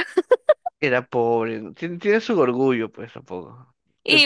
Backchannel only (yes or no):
no